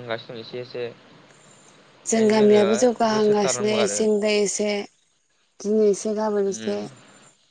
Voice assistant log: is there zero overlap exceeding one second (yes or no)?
no